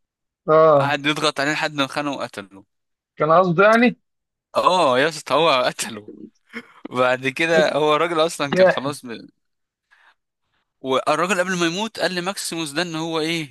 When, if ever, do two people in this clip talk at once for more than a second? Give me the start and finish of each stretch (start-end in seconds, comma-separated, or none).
none